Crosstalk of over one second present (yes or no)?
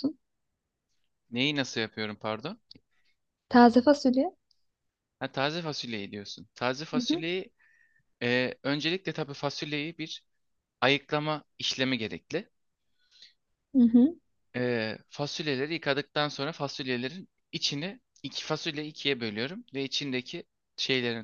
no